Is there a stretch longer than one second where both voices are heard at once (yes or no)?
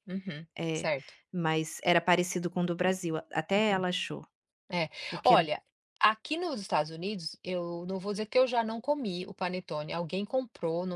no